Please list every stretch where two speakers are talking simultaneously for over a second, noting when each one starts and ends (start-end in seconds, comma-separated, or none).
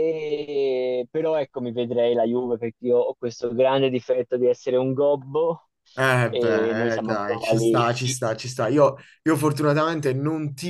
6.3-8.2